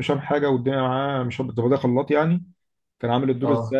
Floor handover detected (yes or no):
no